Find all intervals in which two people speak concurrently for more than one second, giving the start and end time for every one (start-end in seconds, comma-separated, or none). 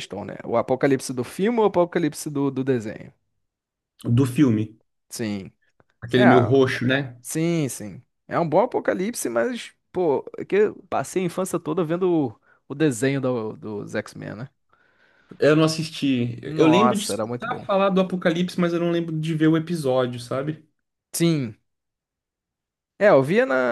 16.4-17.7